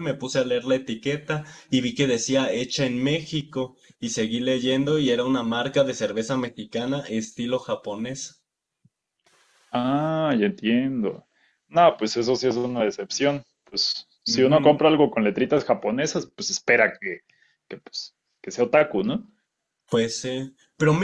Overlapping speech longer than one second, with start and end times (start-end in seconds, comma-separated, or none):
none